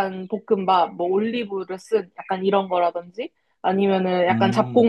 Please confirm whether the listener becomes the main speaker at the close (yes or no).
no